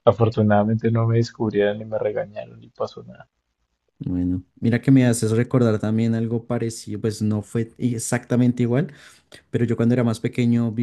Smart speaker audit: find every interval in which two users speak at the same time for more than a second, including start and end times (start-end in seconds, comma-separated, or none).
none